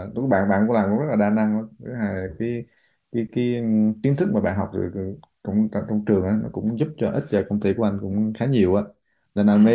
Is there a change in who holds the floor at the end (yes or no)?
no